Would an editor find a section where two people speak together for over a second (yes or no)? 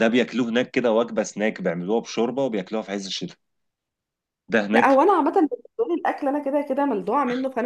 no